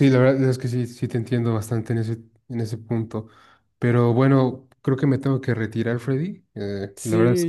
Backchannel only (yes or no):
no